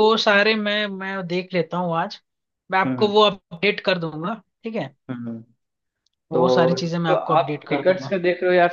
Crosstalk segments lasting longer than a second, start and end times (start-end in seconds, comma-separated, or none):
6.3-8.2